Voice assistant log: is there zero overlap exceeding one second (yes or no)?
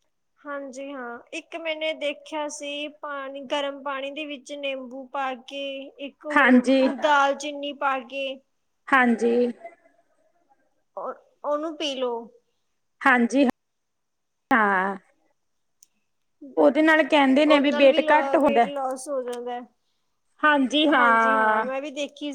no